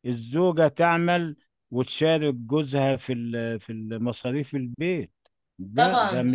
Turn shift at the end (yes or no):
yes